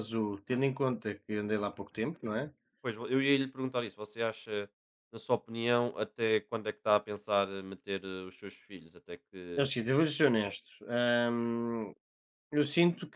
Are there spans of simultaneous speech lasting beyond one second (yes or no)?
no